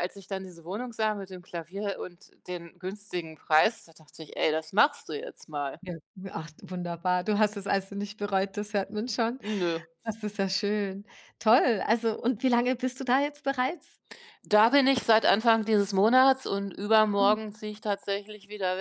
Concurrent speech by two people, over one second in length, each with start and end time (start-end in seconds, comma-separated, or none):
none